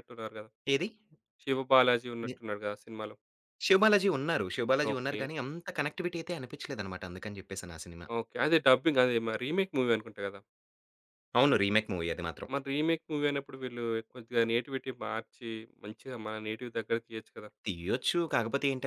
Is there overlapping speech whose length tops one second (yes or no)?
no